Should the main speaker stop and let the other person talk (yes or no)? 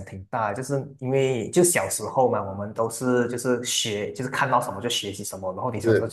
no